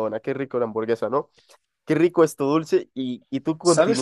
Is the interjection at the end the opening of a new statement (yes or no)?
yes